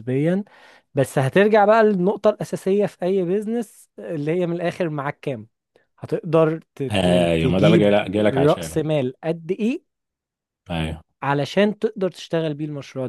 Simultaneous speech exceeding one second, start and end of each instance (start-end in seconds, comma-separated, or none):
6.9-8.8